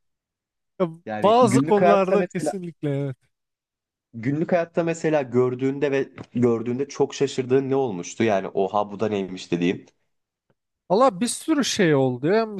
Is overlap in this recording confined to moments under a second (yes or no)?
no